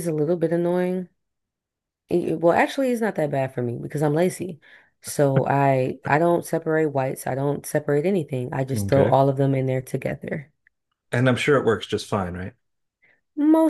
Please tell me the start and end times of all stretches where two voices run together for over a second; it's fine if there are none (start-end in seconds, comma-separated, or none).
none